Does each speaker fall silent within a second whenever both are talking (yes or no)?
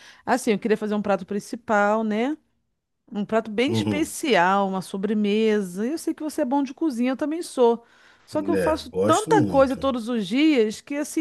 no